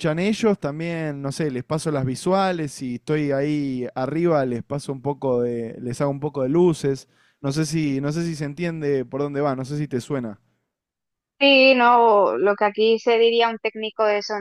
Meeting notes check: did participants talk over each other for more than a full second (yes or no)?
no